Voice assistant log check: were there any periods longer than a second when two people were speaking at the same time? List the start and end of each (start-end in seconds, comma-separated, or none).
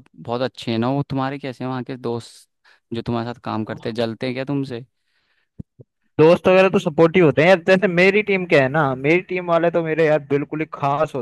none